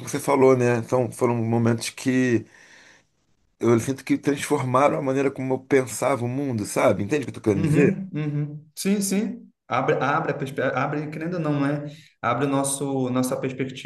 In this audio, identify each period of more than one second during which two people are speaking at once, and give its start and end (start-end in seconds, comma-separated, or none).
none